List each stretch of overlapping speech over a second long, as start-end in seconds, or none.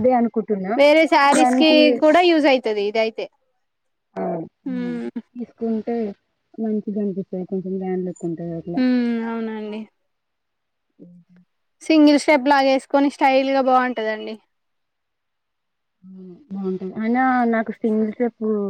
none